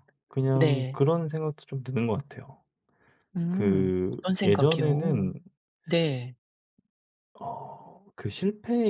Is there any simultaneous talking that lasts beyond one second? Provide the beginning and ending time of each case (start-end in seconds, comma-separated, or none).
3.5-5.3